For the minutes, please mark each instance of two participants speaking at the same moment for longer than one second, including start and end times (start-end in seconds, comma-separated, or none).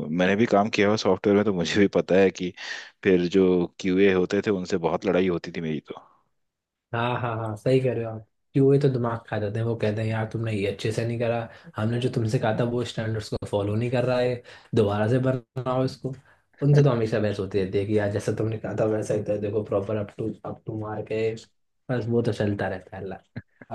none